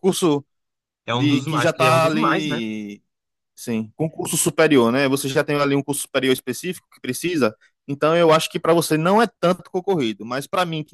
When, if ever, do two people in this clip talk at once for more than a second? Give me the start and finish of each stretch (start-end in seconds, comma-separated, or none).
1.1-2.6